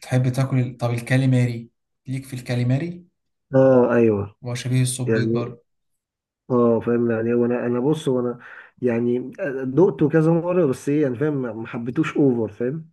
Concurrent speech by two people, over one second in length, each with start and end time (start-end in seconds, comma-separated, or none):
none